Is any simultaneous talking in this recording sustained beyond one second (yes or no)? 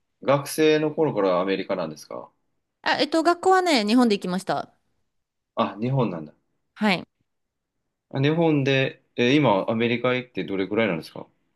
no